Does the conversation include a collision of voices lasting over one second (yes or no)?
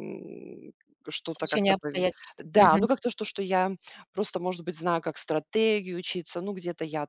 yes